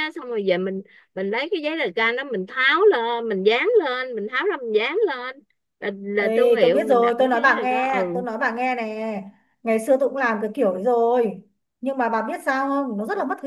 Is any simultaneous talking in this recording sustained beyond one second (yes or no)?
yes